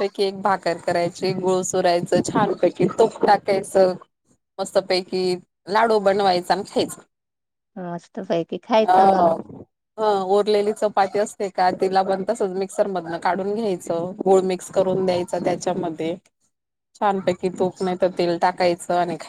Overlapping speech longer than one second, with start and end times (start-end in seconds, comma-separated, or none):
none